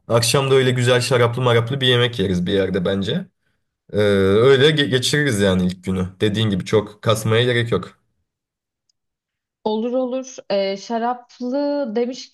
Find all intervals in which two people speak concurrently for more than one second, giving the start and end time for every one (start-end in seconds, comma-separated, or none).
none